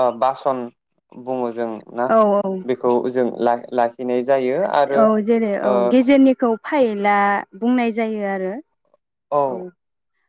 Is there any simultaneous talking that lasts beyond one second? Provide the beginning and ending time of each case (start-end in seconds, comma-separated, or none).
none